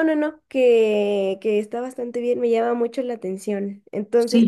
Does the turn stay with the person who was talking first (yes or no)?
yes